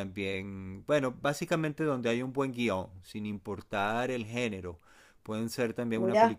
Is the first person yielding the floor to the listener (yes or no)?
no